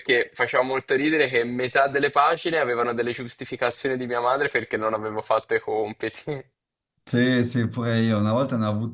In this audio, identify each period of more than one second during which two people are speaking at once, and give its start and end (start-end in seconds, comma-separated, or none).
none